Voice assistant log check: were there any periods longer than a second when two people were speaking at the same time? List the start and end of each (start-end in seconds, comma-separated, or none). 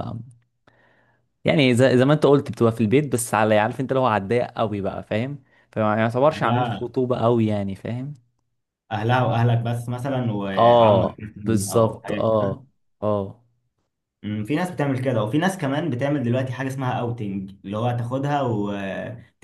10.6-12.6